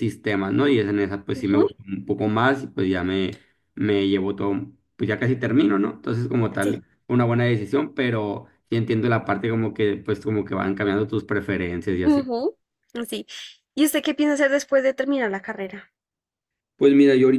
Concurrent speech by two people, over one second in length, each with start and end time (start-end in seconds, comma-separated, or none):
none